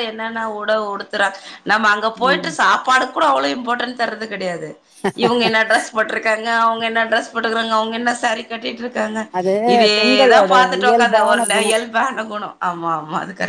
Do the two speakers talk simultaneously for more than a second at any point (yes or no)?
yes